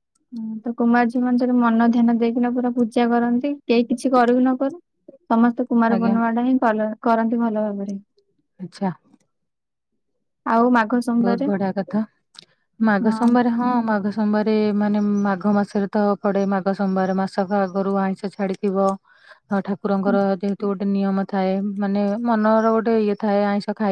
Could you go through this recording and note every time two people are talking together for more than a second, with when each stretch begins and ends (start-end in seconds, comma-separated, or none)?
none